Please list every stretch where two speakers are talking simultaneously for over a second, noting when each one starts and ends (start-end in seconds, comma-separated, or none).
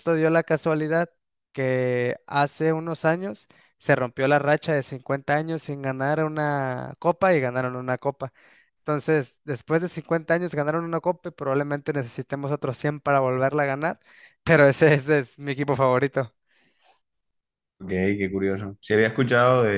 none